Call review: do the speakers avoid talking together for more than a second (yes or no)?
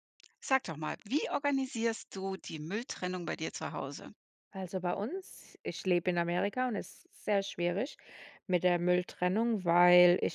yes